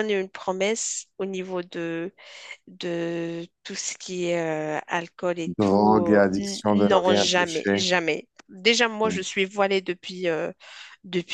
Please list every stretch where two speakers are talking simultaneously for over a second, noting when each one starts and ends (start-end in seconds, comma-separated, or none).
5.6-7.8